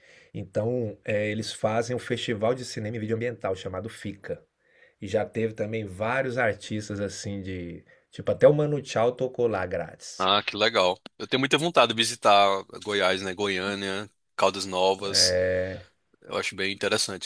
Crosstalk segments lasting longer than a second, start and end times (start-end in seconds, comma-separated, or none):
none